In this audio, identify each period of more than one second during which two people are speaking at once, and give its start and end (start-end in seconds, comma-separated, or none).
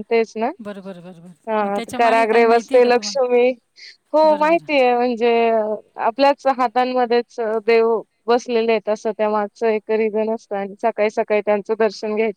1.5-3.4